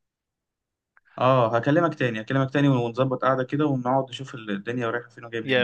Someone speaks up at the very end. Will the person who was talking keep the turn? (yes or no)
no